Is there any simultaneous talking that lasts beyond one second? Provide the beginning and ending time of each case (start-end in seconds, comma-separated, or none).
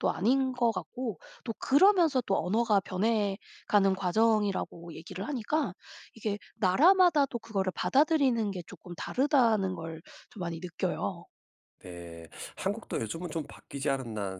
none